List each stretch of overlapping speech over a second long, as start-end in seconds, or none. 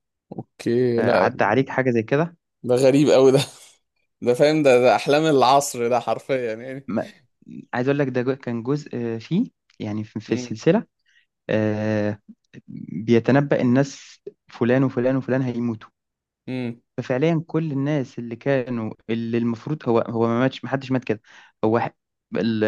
none